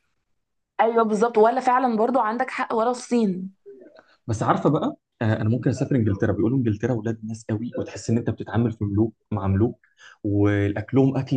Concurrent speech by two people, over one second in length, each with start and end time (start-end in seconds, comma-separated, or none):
none